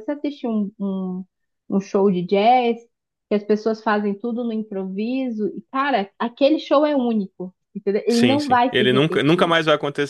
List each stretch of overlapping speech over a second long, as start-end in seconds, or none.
8.1-9.6